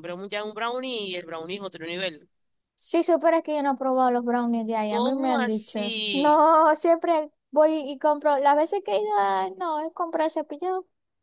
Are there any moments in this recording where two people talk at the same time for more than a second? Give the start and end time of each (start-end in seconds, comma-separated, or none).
4.9-6.4